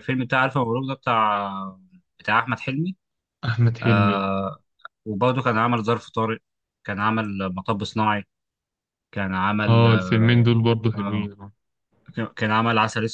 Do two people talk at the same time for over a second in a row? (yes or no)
no